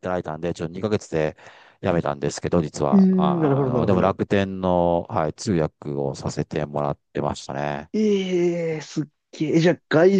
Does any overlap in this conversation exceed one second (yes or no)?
yes